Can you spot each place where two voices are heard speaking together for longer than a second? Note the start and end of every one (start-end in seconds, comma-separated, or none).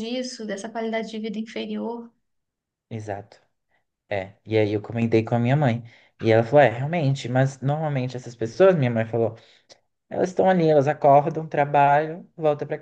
none